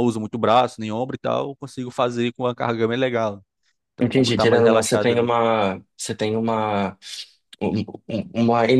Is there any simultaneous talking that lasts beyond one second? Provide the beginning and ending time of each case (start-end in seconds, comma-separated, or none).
4.0-5.3